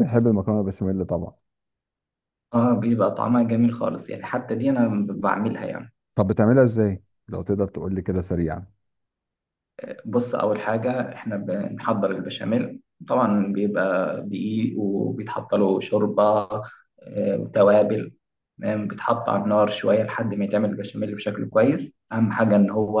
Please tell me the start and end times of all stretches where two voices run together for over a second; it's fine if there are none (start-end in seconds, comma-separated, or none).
none